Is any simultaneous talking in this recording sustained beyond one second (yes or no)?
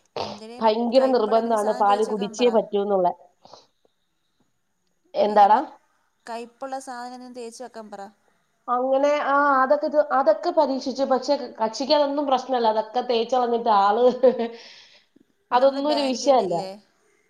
yes